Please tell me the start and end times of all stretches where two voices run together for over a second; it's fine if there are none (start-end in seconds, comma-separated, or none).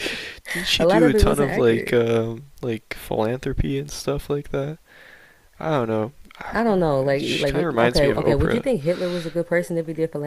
0.8-2.0, 7.2-8.7